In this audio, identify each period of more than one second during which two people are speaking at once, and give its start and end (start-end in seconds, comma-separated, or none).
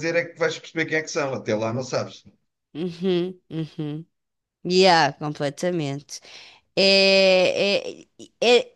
none